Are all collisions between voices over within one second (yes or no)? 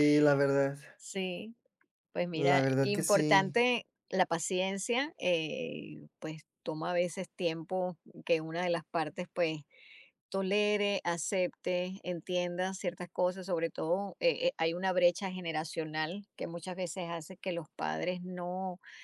no